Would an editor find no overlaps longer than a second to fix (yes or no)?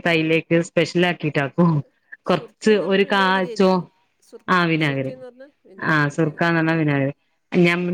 no